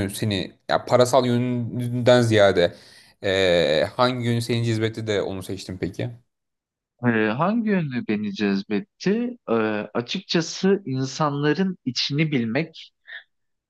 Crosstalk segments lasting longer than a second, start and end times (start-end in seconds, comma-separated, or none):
none